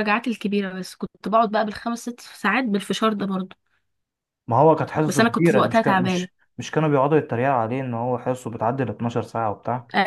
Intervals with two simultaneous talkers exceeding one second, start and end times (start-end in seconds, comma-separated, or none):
5.1-6.3